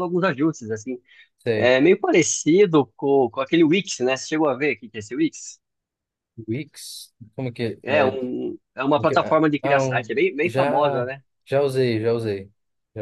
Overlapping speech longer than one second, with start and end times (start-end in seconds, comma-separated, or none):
9.0-11.1